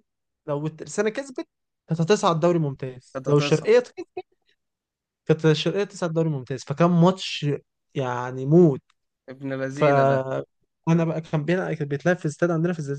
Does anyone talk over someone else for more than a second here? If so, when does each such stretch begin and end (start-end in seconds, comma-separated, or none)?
none